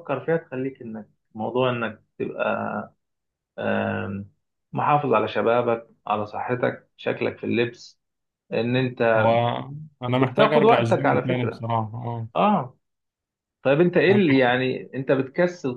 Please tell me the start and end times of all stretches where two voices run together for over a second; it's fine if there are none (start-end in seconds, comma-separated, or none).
10.2-11.7